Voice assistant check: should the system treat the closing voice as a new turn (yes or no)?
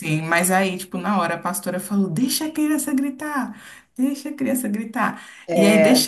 no